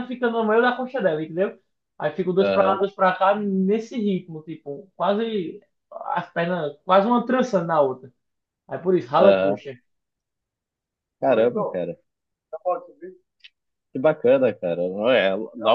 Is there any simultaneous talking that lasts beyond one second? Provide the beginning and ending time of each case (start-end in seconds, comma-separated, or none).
none